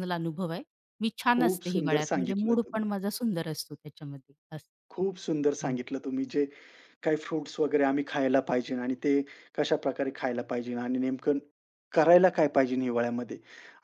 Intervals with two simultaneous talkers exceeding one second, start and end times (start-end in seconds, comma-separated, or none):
1.4-2.8